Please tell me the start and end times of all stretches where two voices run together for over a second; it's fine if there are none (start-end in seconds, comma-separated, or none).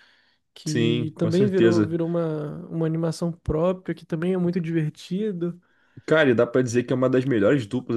0.7-2.0